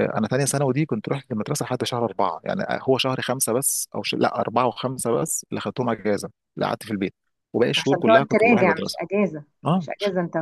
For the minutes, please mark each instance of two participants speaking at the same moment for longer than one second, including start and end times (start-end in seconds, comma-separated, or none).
7.8-9.0